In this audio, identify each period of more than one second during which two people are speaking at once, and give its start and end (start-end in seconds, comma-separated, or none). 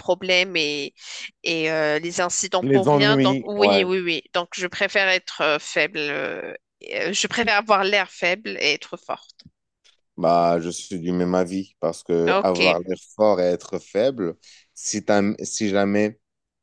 2.6-3.9